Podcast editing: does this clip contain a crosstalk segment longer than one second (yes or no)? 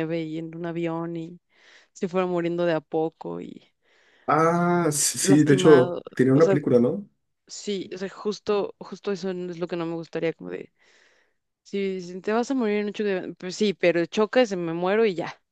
yes